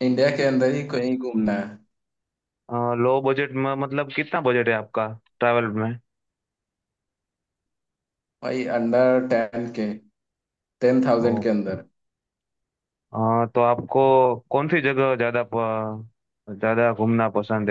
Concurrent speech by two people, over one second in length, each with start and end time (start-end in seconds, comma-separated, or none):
none